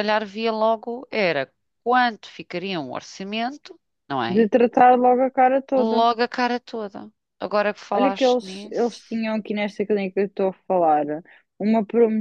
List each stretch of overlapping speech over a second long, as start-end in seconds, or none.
7.9-9.2